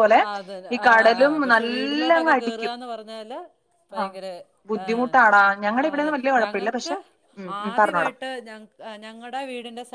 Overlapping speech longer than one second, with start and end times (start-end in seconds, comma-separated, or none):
4.8-6.9